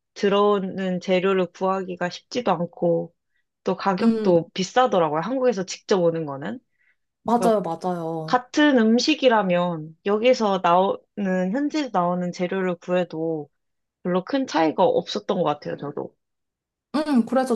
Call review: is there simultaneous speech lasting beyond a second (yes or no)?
no